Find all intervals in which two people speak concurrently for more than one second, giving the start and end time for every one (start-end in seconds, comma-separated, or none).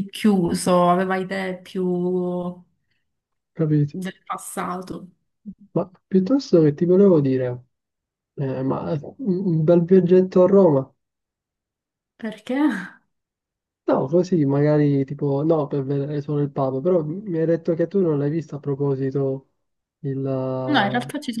none